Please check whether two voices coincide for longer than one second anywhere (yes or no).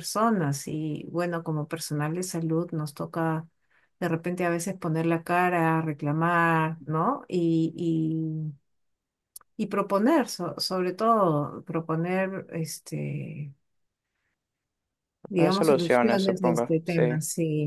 yes